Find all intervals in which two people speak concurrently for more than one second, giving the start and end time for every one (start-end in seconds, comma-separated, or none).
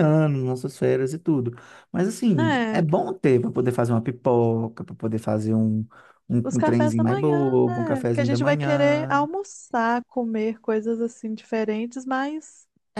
6.4-9.2